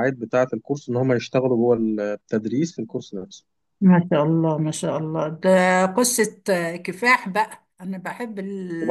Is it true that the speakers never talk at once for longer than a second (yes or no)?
yes